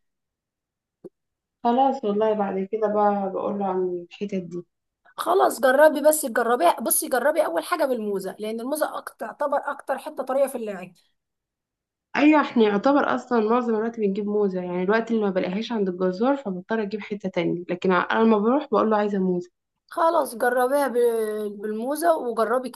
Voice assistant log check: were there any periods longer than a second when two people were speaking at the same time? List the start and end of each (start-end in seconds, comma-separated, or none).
none